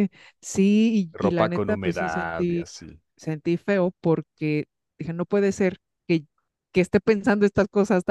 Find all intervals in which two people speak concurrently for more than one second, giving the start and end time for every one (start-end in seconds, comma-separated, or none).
1.1-2.7